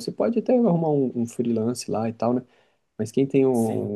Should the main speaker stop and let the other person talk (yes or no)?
no